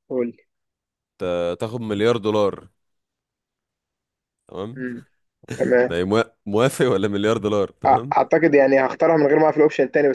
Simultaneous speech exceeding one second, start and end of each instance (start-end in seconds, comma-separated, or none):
none